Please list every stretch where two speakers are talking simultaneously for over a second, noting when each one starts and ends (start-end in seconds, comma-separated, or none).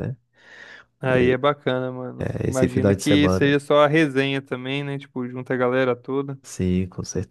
2.2-3.6